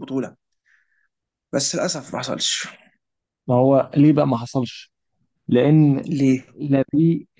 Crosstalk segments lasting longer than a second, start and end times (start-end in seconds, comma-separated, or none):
none